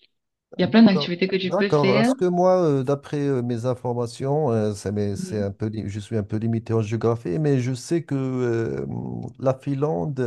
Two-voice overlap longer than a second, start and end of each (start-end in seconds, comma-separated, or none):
0.6-2.1